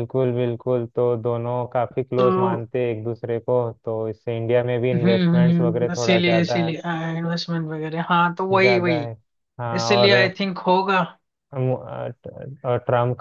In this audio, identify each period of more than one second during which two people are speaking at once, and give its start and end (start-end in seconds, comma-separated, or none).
4.9-6.8